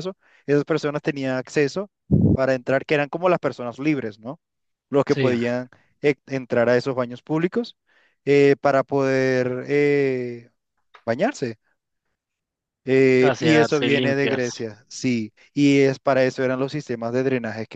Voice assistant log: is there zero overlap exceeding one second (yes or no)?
no